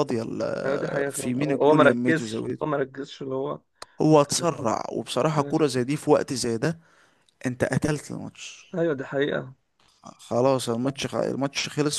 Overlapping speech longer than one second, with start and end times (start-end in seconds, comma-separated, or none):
0.7-2.6